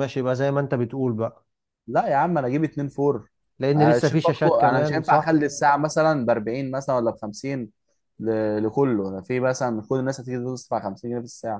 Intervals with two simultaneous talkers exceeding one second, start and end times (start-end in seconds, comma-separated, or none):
3.8-5.4